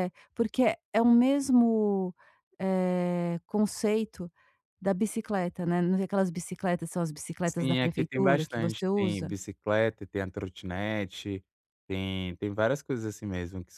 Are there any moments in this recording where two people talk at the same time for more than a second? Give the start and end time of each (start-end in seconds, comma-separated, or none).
7.4-9.3